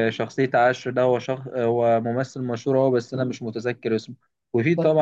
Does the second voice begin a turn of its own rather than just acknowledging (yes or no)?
no